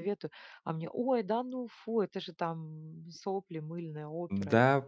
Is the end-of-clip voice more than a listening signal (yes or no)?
yes